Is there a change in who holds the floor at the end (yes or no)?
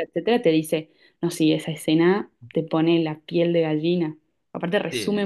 no